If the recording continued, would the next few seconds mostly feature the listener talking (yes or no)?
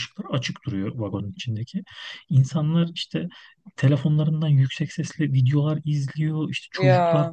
no